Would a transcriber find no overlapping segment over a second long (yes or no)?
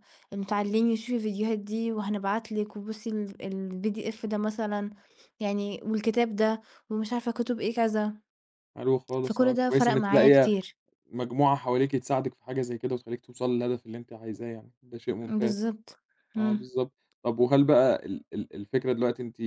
no